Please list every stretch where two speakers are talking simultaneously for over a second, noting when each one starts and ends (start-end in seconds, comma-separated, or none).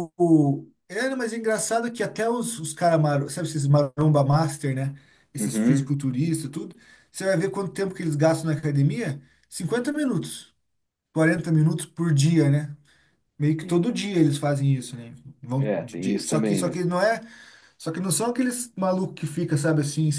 15.6-16.8